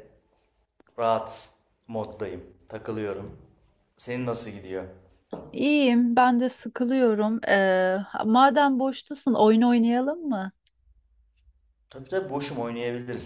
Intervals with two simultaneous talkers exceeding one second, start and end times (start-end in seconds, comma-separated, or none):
none